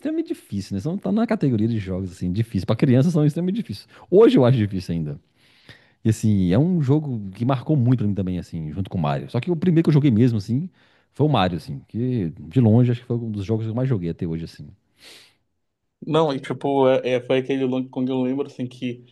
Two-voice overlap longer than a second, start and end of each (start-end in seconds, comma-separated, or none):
none